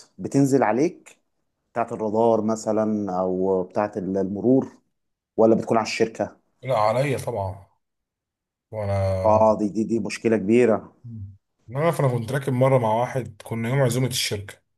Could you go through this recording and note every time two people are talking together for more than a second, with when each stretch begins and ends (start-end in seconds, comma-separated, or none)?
none